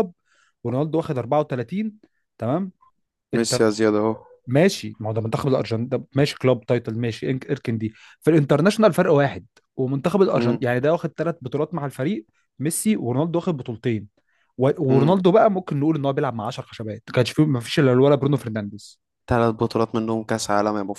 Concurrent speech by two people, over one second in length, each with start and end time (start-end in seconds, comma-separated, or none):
none